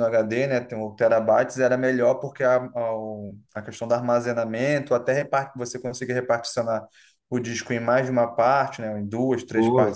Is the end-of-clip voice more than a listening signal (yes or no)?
no